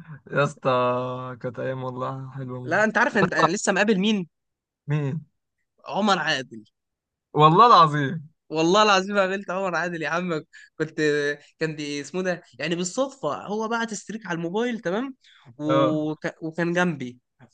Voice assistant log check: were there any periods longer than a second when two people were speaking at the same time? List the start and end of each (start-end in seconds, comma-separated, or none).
none